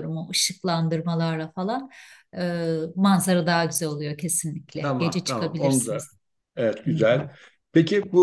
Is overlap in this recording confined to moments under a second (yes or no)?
no